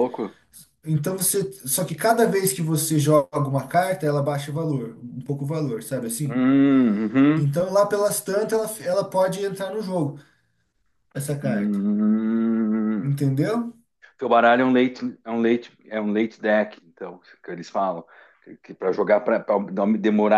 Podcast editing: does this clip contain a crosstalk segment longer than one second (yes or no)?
no